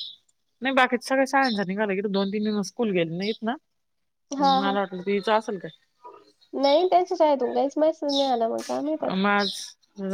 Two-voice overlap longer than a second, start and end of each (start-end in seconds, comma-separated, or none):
none